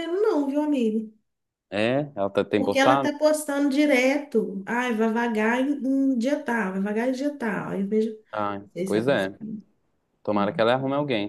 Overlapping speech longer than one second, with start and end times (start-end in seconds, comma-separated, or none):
none